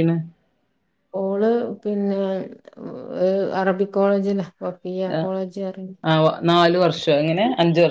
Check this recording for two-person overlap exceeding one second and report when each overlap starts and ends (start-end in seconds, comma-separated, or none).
none